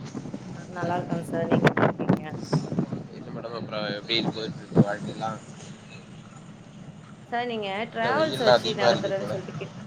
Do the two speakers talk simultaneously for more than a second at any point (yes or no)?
yes